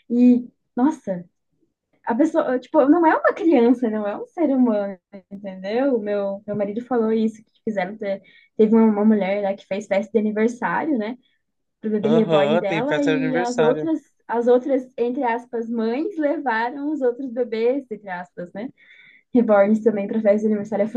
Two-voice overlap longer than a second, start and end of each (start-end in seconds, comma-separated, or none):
12.0-13.9